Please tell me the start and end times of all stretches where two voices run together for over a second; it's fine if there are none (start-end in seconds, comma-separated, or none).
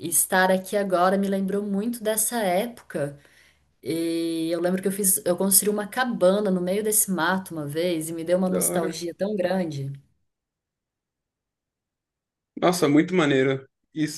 none